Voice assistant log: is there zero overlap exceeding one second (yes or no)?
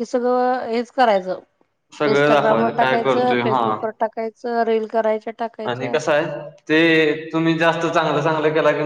no